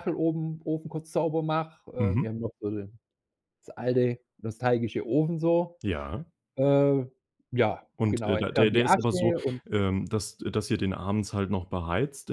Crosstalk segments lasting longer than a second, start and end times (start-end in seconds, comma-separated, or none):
8.0-9.3